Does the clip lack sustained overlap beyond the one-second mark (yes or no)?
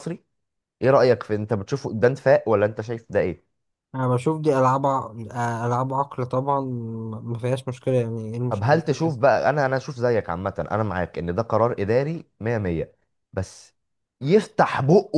yes